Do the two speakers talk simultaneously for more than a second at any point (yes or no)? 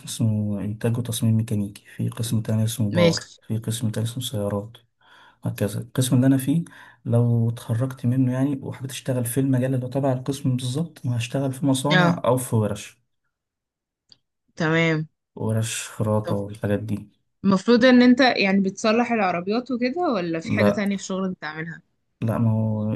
no